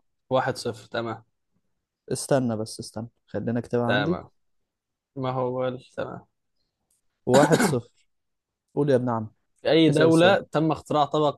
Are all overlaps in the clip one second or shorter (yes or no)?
yes